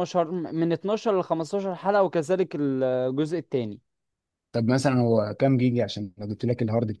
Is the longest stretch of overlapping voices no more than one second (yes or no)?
yes